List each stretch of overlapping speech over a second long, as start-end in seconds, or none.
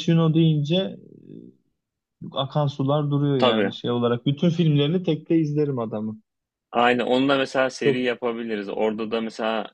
none